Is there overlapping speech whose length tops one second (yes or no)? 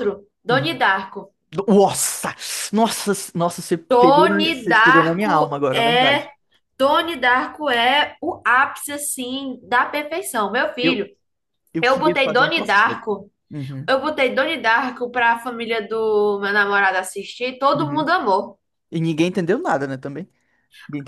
yes